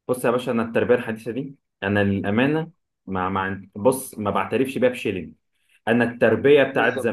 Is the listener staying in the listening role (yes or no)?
yes